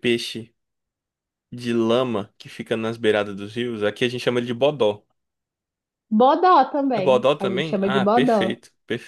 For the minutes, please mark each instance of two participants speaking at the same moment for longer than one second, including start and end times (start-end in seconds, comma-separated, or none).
6.9-8.6